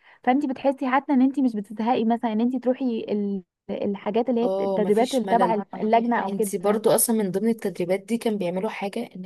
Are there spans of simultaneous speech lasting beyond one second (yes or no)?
yes